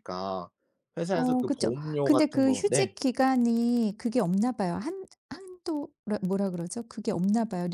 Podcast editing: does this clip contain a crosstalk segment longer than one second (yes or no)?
yes